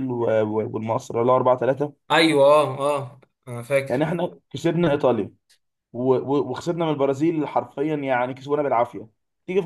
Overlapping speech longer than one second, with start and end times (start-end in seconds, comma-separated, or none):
none